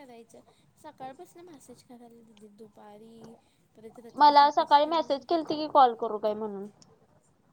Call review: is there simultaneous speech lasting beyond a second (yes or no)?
yes